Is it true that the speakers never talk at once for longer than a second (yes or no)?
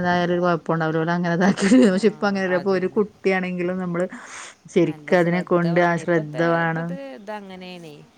no